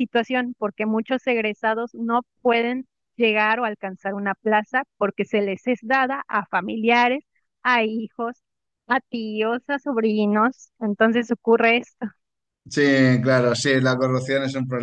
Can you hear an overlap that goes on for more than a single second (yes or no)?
no